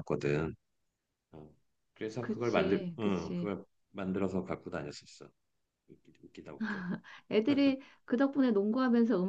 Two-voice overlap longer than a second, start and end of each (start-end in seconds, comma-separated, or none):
2.2-3.5